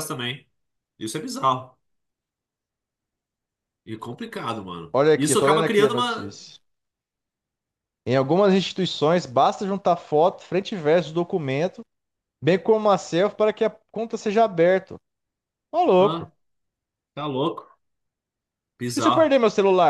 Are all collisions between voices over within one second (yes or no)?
no